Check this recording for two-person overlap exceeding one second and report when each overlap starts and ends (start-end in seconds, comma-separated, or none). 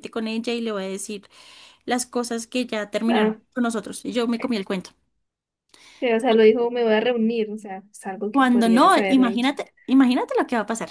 8.3-9.5